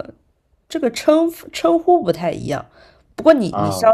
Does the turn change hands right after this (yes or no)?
no